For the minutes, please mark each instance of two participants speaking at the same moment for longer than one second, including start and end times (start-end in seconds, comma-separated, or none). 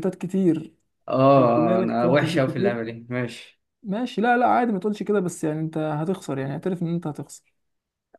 1.4-2.8